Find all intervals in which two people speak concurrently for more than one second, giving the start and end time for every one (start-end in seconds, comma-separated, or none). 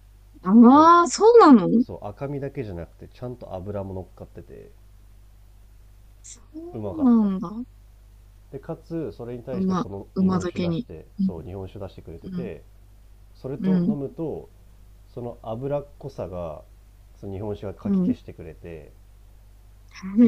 9.5-11.3